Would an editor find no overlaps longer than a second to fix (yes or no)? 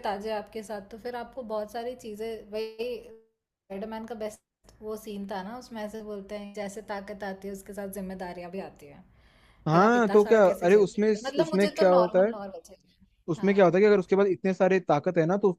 no